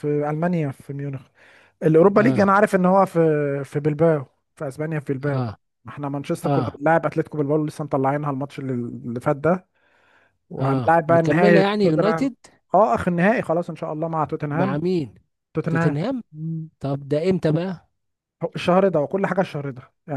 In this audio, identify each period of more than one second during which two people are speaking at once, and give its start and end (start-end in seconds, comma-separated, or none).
10.6-12.3